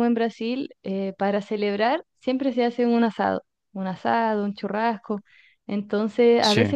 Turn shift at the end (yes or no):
no